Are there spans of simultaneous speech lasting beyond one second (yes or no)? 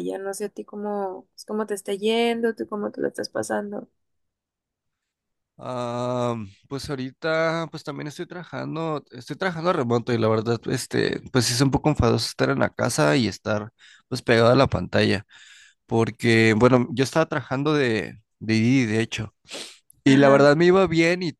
no